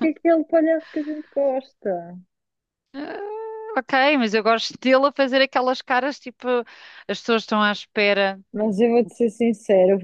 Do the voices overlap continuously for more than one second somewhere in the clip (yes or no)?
no